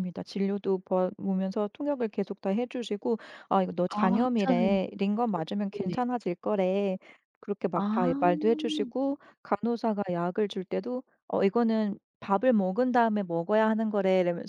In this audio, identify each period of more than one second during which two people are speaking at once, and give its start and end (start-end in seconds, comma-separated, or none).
3.9-6.0